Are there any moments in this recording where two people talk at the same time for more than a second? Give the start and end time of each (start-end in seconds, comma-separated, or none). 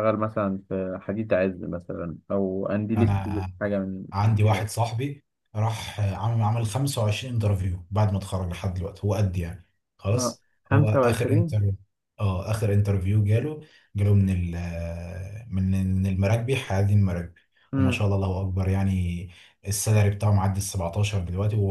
10.1-11.5